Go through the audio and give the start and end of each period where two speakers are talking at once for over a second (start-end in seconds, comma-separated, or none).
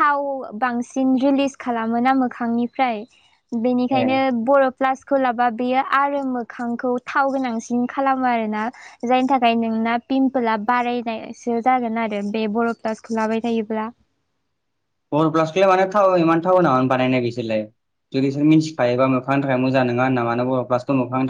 none